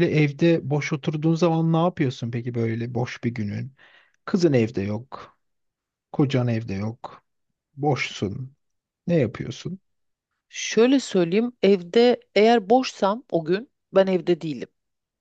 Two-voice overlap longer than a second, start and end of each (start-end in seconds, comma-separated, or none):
none